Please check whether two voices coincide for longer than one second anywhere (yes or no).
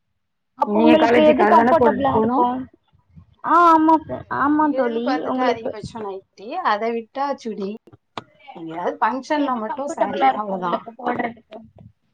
yes